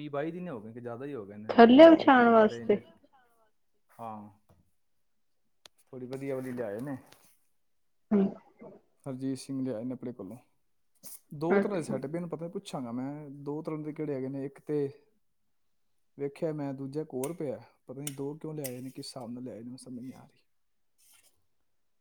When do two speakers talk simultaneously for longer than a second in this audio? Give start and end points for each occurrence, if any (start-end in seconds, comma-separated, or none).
1.5-2.7